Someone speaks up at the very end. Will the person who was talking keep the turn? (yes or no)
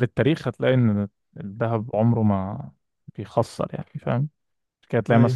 yes